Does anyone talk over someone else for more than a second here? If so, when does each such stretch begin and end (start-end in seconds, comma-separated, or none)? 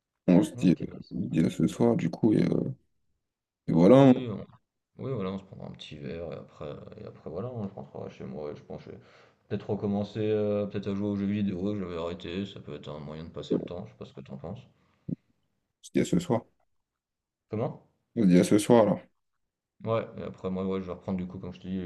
none